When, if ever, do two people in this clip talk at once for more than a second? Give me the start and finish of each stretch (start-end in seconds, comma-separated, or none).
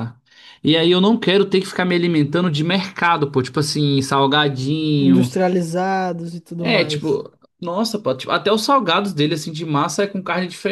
none